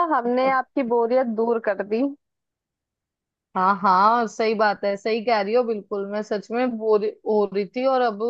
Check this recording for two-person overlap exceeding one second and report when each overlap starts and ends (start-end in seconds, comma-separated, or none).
none